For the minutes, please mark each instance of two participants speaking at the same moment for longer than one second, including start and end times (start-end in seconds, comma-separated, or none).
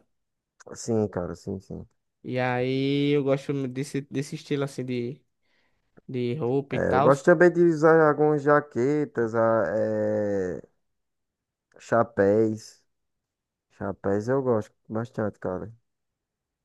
none